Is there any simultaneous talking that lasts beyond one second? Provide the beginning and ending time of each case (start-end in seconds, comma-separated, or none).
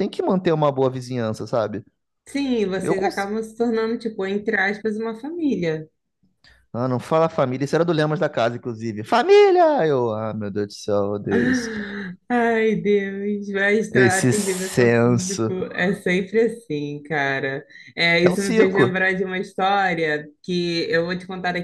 13.9-15.5